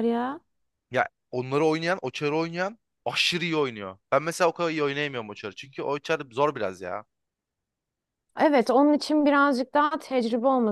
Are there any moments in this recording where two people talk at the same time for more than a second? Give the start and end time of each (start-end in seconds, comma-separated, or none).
none